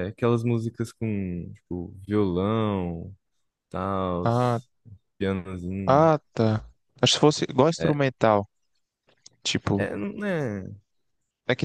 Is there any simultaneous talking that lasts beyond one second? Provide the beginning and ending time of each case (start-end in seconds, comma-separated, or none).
none